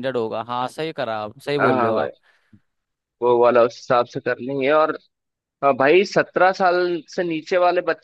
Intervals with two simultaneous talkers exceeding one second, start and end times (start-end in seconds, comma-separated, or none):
none